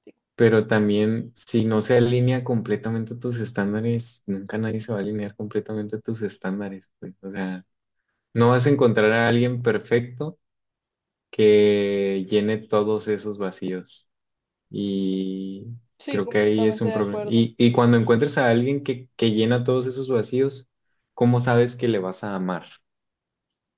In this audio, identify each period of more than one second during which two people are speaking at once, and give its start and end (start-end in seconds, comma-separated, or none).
16.1-17.5